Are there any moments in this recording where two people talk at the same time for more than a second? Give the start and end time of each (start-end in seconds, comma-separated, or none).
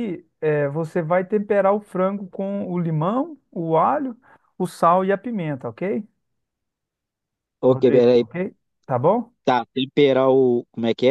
none